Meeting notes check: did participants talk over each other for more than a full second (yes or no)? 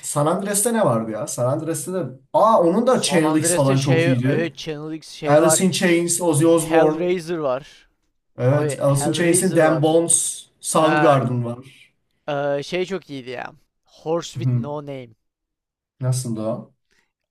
yes